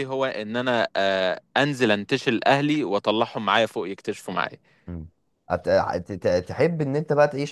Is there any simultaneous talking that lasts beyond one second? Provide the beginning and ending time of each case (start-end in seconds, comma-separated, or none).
none